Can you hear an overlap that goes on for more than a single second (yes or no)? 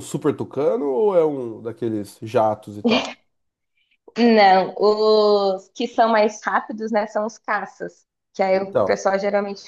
no